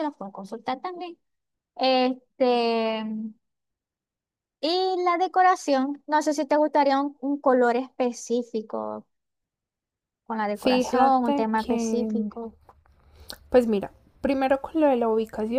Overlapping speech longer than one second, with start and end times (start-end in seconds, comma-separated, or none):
10.5-12.3